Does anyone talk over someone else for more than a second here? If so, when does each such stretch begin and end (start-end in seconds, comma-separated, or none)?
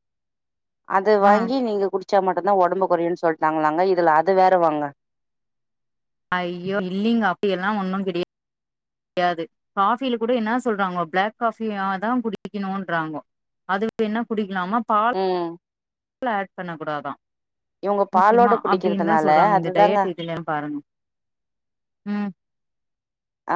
18.2-20.0